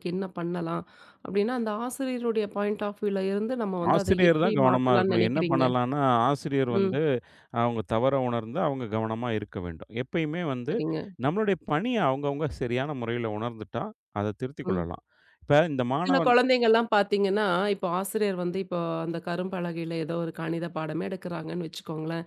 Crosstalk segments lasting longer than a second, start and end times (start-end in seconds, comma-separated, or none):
3.9-5.6